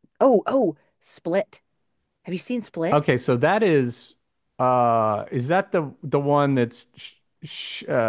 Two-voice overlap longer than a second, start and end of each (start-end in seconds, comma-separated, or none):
none